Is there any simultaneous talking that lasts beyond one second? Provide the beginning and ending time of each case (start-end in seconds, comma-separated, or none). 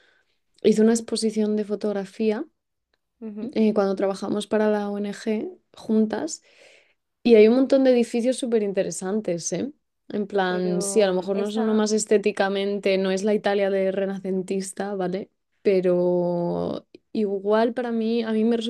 10.5-11.8